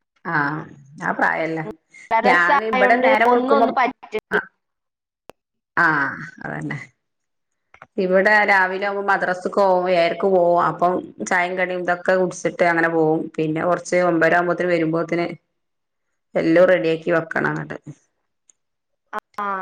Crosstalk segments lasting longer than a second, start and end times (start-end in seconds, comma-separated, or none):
2.3-3.7